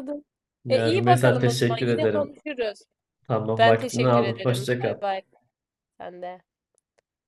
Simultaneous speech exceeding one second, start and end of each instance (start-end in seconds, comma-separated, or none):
0.7-2.4, 3.6-5.0